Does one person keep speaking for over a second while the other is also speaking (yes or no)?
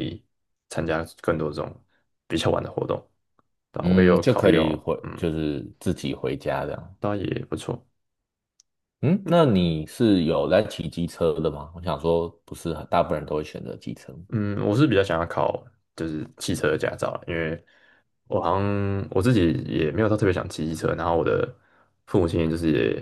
yes